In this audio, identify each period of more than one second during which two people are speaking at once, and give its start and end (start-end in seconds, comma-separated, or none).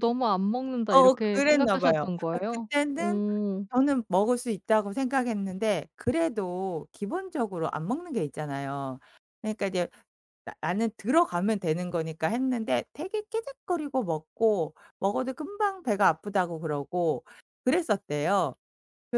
0.9-3.2